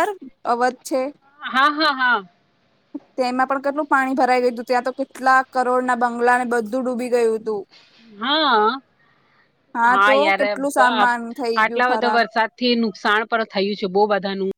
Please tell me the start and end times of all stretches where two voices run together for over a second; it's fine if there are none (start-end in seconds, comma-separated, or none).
10.1-12.2